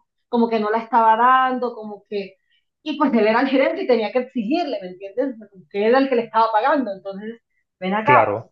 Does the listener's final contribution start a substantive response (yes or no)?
no